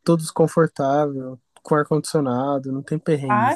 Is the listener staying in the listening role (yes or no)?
no